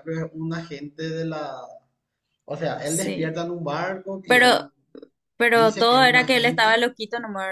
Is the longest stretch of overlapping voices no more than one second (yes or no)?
no